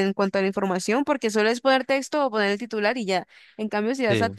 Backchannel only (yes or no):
yes